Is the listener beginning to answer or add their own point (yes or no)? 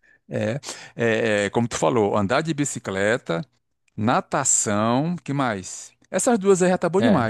yes